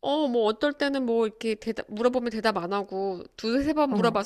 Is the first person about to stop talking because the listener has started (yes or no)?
no